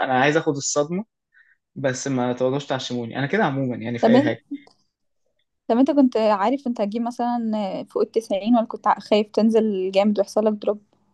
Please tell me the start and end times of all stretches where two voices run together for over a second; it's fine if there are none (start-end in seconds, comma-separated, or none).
none